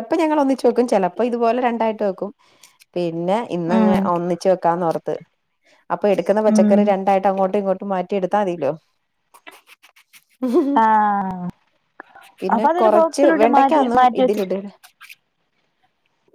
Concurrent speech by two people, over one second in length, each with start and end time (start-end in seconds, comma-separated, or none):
12.5-14.5